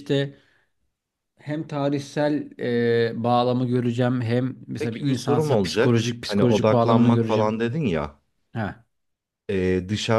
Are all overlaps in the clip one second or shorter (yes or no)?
no